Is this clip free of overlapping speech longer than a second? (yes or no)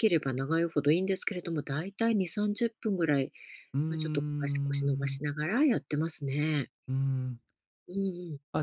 no